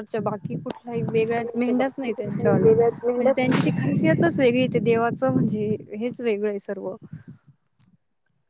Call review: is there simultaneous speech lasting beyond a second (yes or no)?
yes